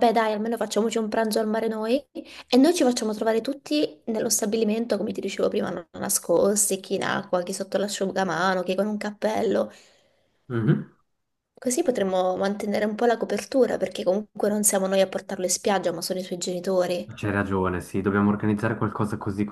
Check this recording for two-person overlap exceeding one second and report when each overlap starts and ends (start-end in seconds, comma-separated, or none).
none